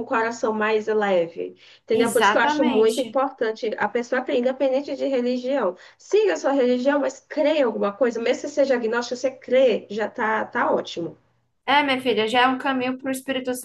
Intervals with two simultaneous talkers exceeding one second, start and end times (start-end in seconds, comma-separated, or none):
1.9-3.2